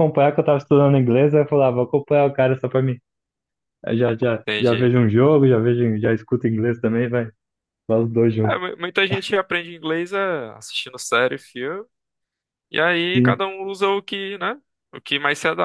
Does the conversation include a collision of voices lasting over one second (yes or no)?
no